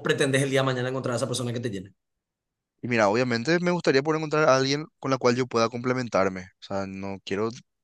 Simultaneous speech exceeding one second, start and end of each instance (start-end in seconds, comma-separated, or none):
none